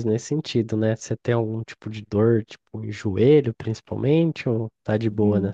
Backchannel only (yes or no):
no